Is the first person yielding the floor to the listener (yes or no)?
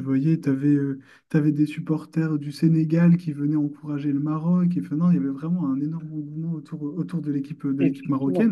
no